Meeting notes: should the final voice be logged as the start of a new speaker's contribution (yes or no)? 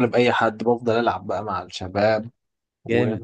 no